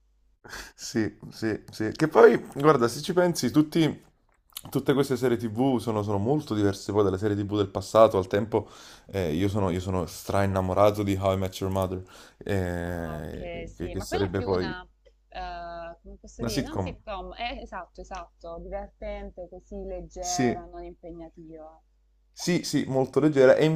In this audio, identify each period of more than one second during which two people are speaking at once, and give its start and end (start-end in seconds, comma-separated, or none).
12.8-14.8